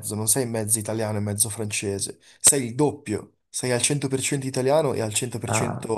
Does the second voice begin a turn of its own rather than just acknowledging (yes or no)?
no